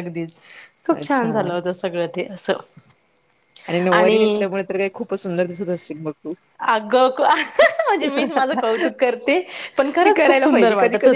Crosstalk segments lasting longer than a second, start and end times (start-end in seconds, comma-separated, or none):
none